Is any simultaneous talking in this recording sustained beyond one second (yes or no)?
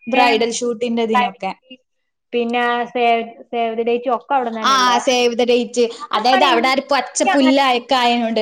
no